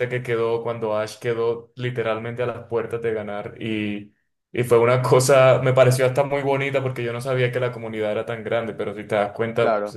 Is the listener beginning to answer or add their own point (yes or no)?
no